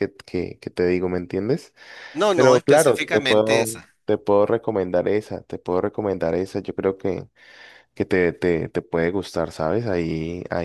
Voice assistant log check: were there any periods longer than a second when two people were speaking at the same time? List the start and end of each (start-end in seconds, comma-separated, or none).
2.3-3.7